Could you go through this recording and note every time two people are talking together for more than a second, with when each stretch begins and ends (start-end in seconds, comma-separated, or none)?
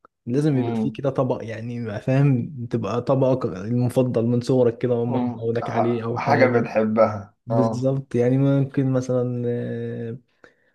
5.1-6.7